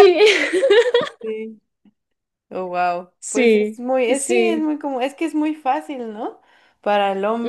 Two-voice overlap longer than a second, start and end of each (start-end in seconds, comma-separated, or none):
3.2-4.7